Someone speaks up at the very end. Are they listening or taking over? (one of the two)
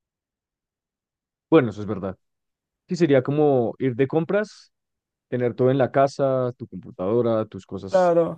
taking over